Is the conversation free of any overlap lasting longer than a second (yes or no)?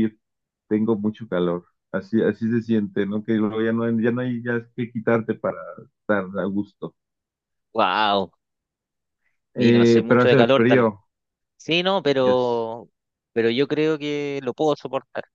no